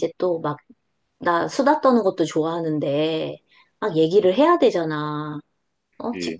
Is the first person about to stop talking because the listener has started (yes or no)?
no